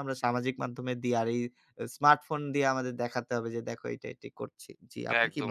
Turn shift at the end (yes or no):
yes